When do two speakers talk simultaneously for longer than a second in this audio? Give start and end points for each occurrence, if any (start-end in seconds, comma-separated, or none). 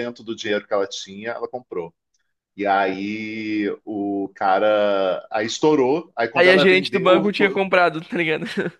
6.3-7.6